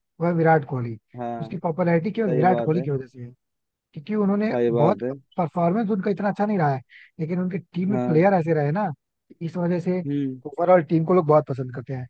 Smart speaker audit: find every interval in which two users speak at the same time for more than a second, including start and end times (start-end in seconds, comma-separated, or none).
none